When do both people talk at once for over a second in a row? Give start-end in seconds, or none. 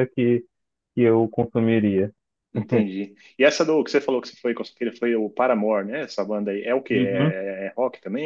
none